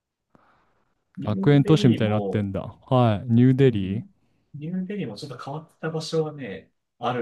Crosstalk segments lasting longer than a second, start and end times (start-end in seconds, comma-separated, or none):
1.2-2.5